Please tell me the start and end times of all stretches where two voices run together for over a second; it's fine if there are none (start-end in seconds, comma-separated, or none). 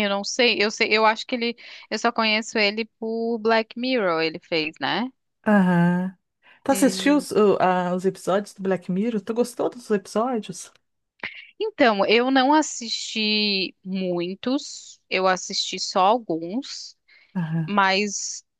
none